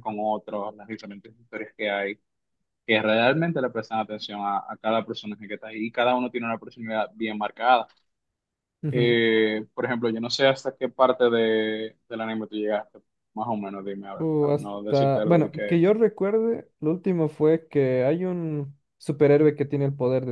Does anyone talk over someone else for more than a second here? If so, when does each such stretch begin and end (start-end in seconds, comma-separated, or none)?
14.2-15.9